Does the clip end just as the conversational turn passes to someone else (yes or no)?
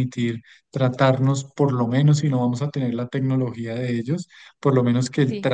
no